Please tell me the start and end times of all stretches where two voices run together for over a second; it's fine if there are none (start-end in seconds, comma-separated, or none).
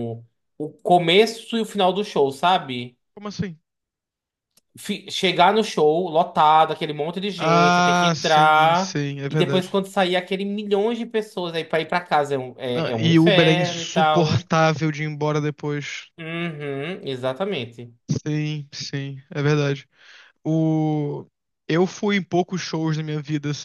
7.4-9.8, 12.8-14.5